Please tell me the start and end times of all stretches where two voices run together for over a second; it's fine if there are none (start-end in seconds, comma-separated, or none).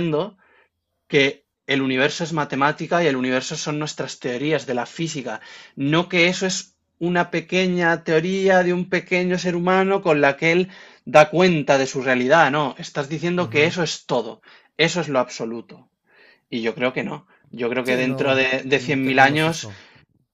17.8-19.7